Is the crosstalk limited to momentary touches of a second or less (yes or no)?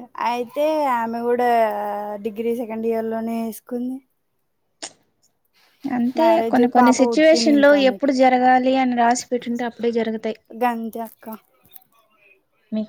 no